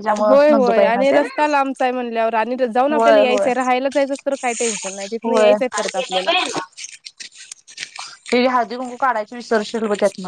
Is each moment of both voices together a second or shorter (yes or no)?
yes